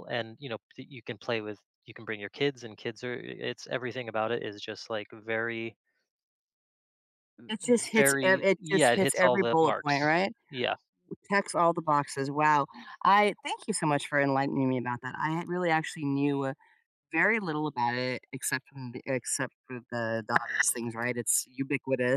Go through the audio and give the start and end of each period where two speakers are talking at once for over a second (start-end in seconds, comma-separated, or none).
8.0-10.3